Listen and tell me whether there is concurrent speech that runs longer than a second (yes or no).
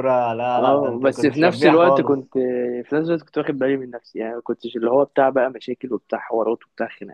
yes